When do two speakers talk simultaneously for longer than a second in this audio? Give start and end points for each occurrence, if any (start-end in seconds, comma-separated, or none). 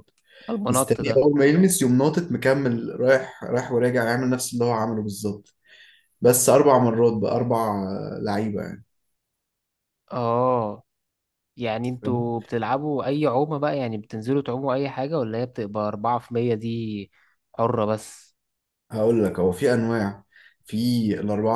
none